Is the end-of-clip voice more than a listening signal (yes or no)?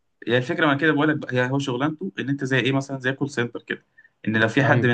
no